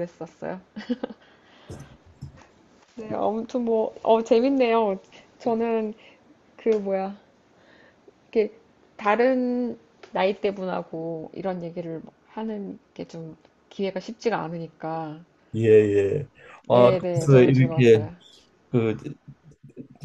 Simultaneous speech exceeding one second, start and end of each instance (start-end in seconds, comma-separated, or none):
16.7-18.1